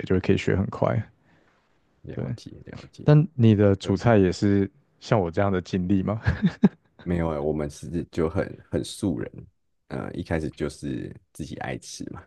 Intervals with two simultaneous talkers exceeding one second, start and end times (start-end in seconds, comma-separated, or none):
none